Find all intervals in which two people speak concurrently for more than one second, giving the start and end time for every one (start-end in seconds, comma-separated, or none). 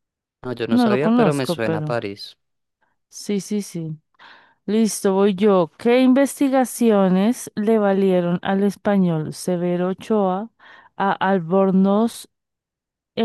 0.7-2.0